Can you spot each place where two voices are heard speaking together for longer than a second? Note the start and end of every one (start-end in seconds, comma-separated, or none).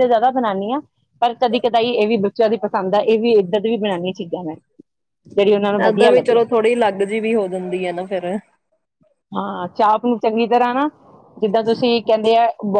none